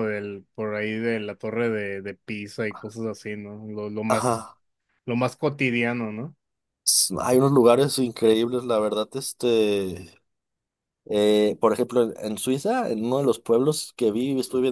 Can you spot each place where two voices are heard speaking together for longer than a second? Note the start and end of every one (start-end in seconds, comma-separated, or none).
none